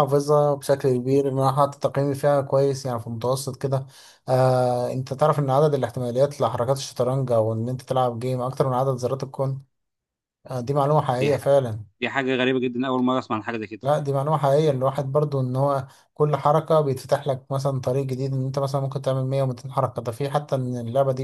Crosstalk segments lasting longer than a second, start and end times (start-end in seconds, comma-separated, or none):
none